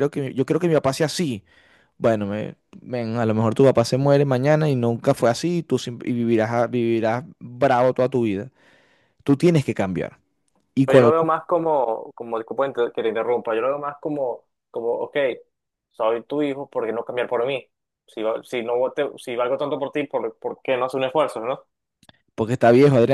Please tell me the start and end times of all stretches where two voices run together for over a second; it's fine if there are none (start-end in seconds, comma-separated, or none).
none